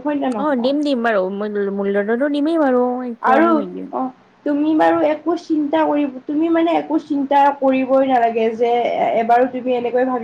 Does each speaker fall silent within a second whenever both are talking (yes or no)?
yes